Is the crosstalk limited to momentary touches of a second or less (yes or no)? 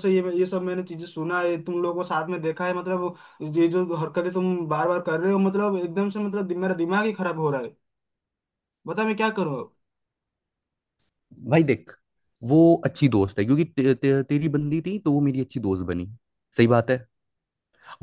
yes